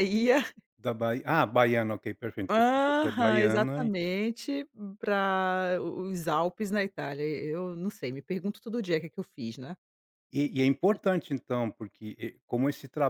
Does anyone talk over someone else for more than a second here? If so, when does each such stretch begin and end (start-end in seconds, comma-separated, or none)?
2.5-3.9